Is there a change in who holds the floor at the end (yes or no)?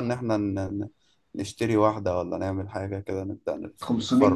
yes